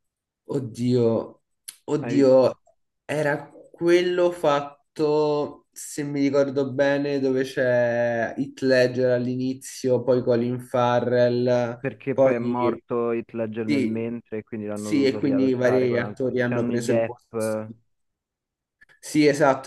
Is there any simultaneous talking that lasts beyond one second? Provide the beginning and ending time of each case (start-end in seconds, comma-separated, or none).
14.7-17.2